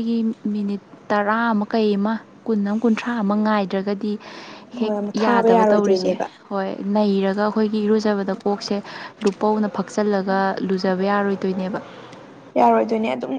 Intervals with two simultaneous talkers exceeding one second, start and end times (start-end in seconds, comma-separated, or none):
4.8-6.2